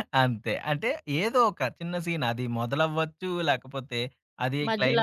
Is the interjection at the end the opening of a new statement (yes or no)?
no